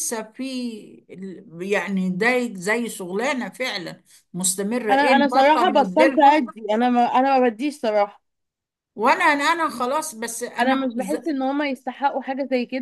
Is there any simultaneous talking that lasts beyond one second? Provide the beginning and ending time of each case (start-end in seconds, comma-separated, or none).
4.9-6.4